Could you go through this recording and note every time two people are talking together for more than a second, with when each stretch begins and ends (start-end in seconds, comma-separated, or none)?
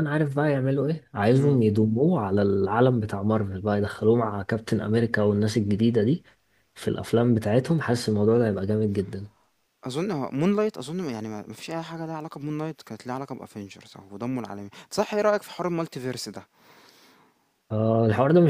none